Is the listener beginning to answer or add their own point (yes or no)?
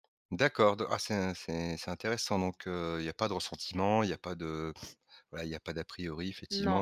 no